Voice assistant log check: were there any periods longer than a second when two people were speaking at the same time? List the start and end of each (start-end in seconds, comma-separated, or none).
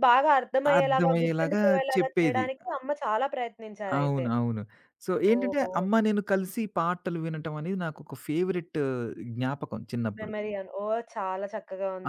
0.8-2.4